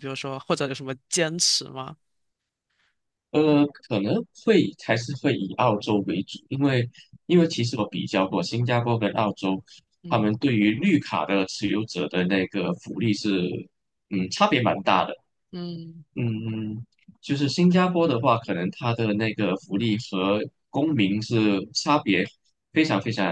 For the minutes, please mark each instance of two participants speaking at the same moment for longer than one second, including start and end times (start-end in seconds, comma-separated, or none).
none